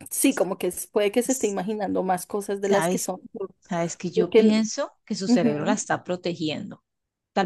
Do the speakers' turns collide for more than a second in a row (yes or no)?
no